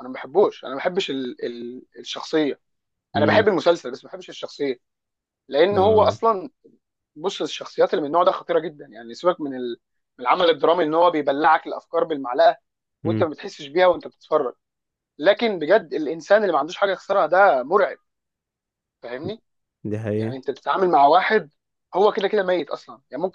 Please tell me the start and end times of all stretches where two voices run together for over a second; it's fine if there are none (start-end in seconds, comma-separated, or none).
none